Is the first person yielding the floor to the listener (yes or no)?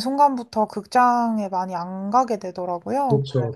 yes